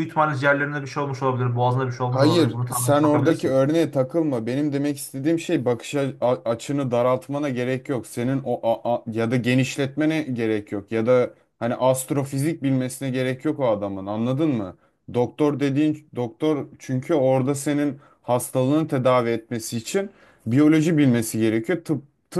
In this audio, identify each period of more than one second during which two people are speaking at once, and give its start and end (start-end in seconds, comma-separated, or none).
2.1-3.6